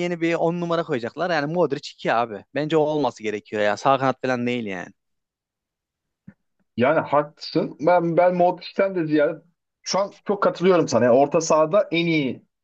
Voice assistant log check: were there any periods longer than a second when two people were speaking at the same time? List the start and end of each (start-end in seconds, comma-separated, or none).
none